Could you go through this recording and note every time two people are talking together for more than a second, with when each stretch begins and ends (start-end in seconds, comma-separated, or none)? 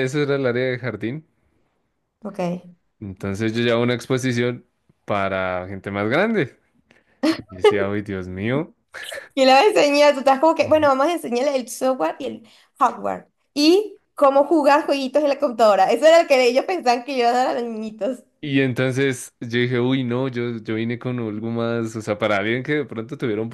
none